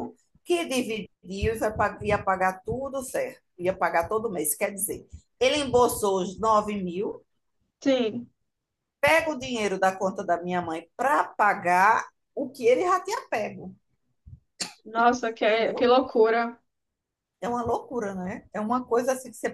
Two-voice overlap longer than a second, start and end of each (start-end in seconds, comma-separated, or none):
none